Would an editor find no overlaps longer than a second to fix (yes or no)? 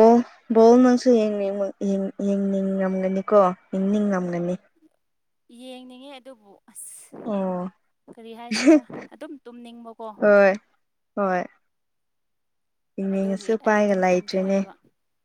no